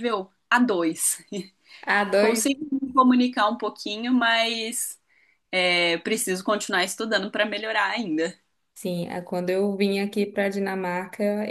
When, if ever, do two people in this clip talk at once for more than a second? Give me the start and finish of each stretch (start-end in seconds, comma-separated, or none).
none